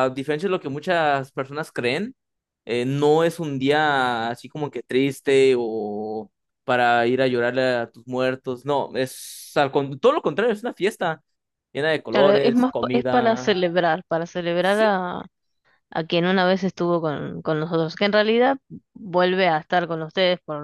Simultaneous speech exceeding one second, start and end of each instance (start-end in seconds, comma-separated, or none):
12.1-13.6